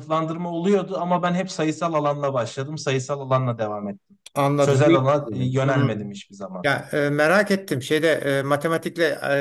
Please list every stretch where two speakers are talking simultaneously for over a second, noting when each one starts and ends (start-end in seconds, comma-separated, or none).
4.6-6.0